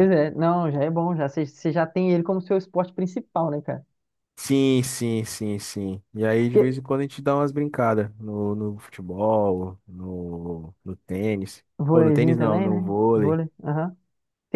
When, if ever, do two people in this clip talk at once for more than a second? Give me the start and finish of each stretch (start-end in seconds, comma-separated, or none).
11.8-13.4